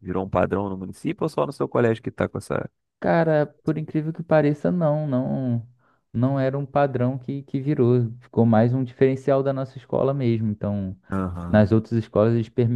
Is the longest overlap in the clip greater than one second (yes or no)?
no